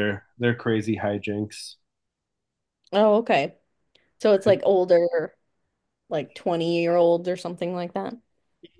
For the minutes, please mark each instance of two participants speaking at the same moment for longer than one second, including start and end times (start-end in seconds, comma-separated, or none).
none